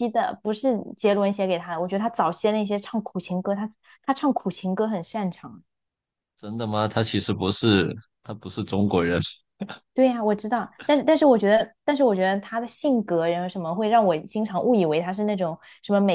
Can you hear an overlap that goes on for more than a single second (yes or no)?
no